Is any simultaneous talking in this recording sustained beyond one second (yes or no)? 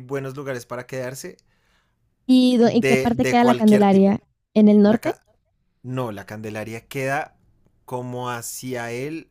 yes